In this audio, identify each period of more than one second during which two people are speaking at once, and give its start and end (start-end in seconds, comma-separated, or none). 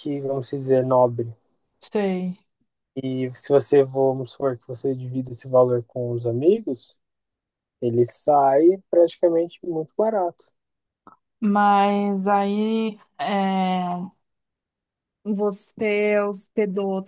none